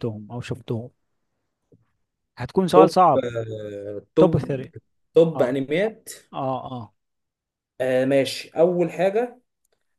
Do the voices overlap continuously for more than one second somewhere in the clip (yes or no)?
no